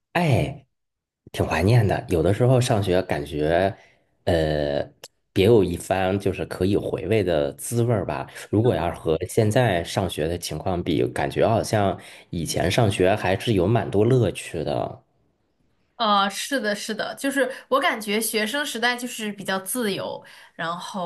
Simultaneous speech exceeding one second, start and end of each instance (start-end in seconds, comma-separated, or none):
none